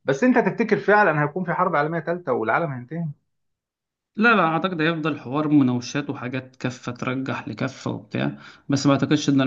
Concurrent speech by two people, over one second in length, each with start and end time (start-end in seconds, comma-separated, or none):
none